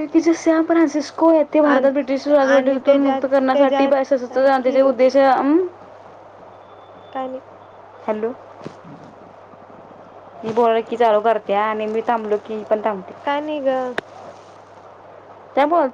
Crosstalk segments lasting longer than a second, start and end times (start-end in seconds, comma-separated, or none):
1.6-4.9